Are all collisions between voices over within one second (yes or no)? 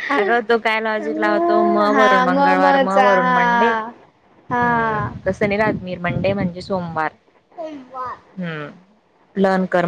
no